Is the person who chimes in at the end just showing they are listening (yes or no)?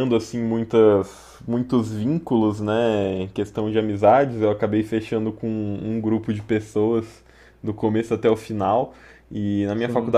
yes